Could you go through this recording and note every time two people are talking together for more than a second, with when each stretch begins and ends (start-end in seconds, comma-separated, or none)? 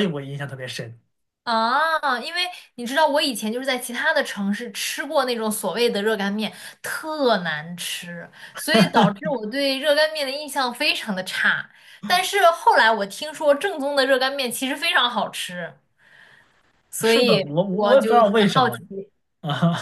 17.0-18.8